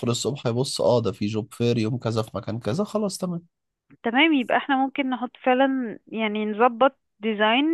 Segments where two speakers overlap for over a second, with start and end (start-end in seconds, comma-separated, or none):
none